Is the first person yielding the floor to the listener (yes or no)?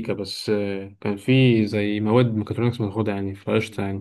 yes